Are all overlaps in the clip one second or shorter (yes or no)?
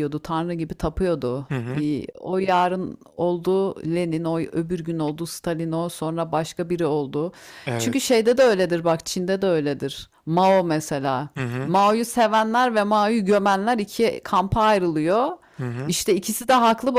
yes